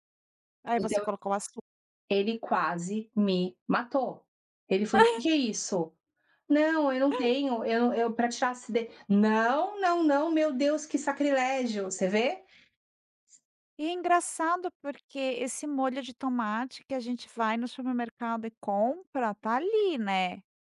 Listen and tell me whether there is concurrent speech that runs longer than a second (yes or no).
no